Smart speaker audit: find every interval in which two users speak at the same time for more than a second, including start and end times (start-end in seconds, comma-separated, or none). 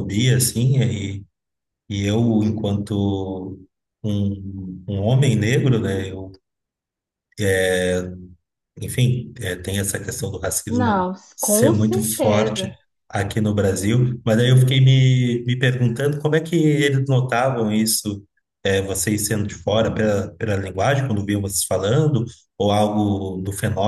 10.7-12.7